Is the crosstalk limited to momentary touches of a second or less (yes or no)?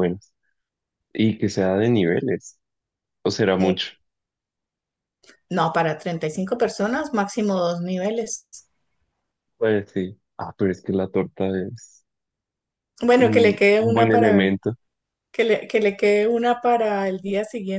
no